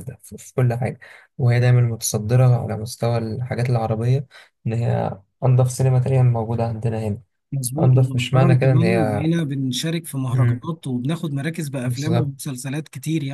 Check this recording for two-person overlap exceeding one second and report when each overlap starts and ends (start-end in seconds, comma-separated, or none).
7.8-9.2